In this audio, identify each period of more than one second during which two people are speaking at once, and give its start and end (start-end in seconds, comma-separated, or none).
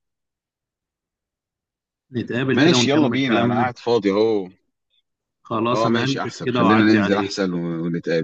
2.5-3.7, 5.7-7.4